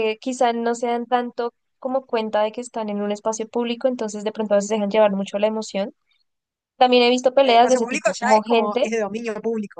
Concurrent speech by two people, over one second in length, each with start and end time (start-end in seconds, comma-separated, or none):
7.4-8.9